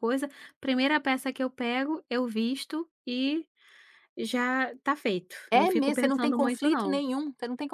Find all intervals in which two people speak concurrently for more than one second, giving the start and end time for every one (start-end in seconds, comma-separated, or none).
5.5-7.0